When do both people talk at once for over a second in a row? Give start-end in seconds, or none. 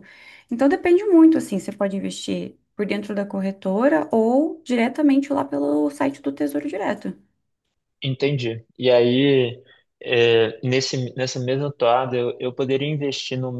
none